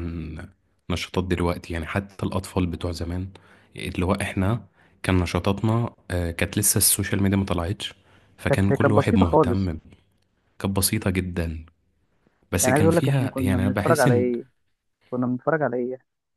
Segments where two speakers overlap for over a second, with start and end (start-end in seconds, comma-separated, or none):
8.5-9.7, 12.6-14.3